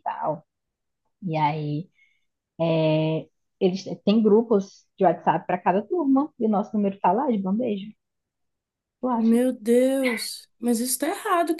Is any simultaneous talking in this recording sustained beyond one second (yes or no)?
no